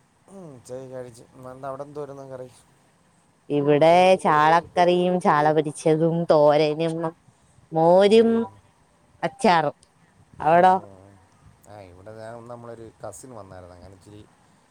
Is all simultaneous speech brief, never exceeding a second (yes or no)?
yes